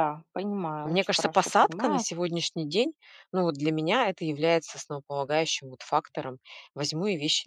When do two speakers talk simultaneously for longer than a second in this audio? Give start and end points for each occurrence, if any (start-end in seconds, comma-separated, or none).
0.8-2.1